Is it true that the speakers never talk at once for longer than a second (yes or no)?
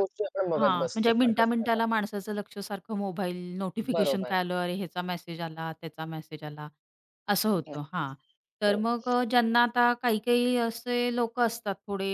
no